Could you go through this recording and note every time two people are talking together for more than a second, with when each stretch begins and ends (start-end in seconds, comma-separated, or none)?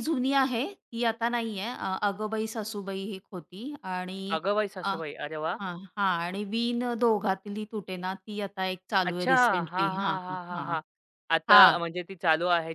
9.1-10.8